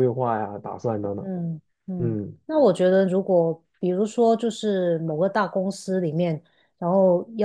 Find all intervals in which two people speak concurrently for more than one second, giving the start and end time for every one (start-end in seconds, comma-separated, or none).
none